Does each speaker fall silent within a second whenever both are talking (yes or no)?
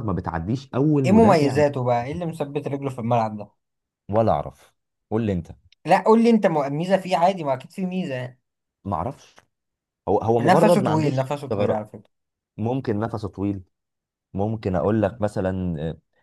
no